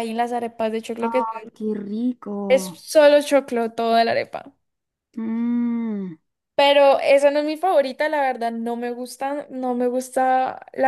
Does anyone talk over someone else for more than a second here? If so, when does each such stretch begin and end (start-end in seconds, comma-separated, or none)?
none